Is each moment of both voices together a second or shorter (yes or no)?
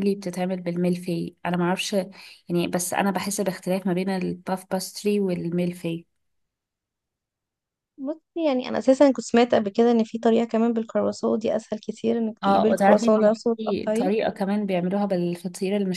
no